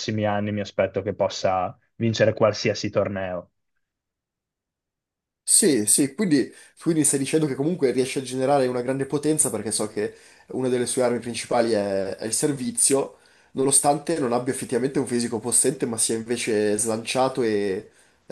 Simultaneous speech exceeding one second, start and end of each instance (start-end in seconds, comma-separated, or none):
none